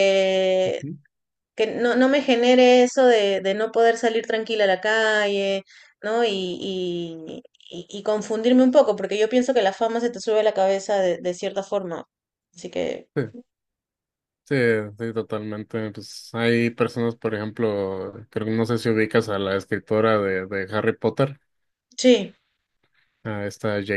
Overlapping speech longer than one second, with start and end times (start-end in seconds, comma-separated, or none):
none